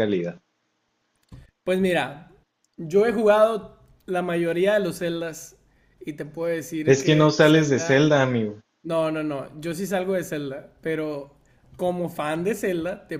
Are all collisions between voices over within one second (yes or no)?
no